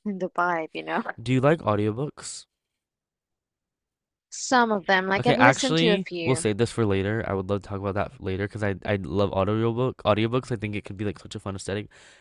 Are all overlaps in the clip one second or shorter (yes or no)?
no